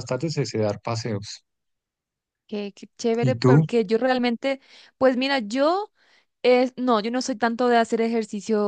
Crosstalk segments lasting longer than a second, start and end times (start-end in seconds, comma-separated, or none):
none